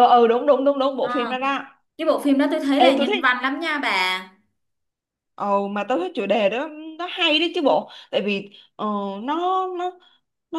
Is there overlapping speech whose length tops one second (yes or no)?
no